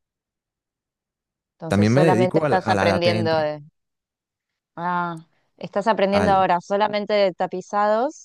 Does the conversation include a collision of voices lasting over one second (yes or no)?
yes